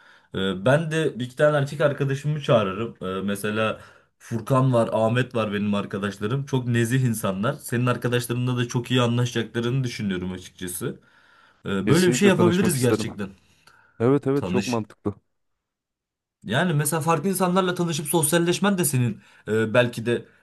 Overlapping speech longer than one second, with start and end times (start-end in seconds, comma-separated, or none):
11.8-13.1